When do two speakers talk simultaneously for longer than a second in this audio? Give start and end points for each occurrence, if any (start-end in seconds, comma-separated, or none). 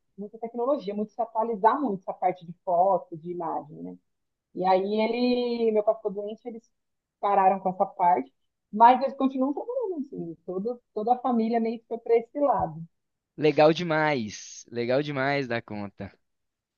none